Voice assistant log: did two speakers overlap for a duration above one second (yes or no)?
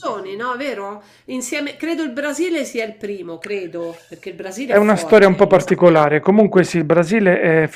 yes